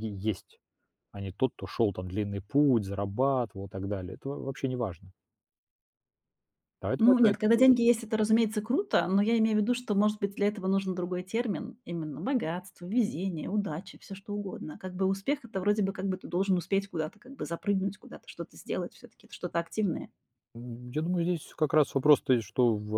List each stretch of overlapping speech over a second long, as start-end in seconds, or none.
none